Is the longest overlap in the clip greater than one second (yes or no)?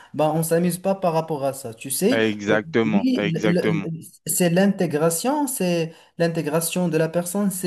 yes